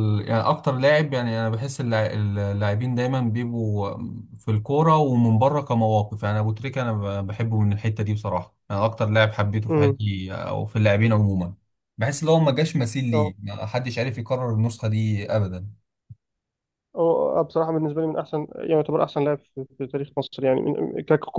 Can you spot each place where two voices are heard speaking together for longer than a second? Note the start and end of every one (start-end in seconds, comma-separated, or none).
none